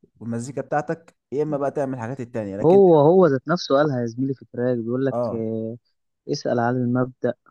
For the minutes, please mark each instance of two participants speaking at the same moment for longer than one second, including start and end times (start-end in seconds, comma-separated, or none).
none